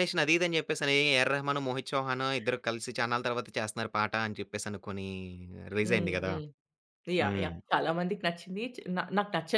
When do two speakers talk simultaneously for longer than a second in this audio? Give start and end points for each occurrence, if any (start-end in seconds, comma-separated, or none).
none